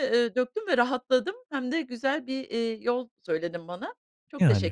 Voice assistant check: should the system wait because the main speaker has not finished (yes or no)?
no